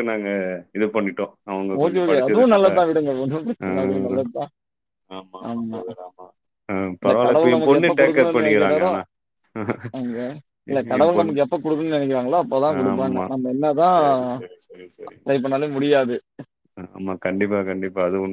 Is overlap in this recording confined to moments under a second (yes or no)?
no